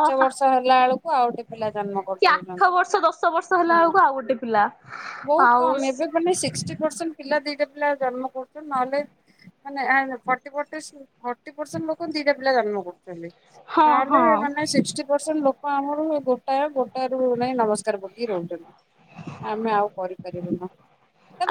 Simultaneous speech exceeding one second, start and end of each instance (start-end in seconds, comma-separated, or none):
1.5-2.7